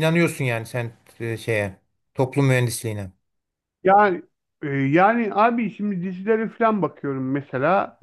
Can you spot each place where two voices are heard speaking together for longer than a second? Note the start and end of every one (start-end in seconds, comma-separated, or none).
none